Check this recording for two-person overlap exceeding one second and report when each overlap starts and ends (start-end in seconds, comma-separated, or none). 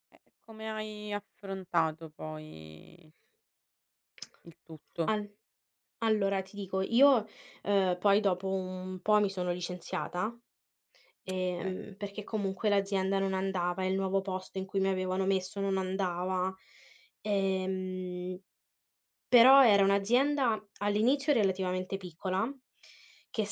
none